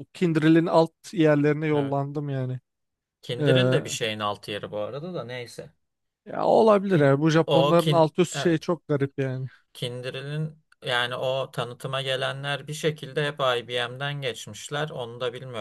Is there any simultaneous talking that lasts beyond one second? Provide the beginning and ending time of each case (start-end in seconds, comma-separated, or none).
6.9-8.7